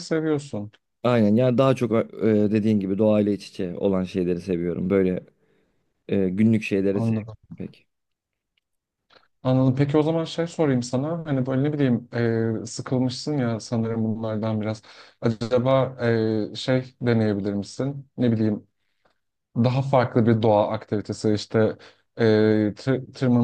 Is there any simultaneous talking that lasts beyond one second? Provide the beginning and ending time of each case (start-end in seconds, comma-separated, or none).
none